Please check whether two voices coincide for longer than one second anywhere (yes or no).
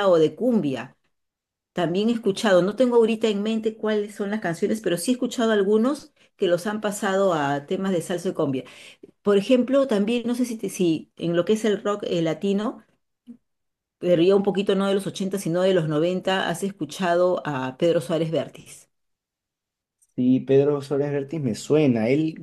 no